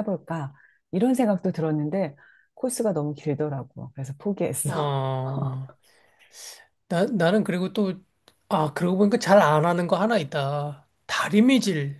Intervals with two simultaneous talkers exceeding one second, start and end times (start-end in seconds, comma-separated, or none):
none